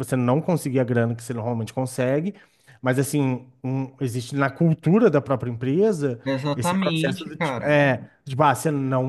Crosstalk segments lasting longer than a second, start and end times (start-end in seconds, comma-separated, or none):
6.2-7.8